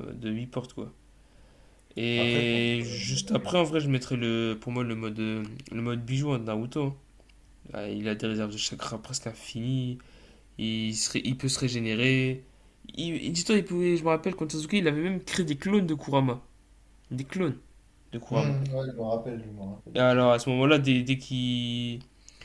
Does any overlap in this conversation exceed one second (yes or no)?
yes